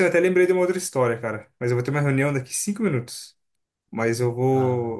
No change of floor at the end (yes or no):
yes